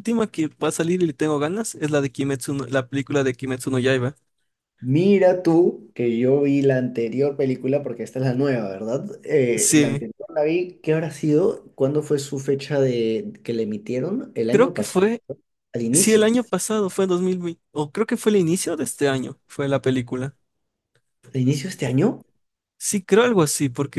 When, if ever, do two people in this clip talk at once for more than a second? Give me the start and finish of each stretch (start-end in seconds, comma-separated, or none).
none